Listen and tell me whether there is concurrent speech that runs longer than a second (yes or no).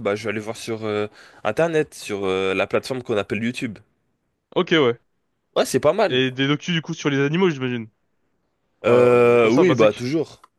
yes